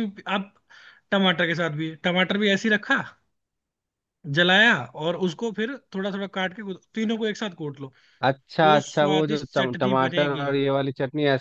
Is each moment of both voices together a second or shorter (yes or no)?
no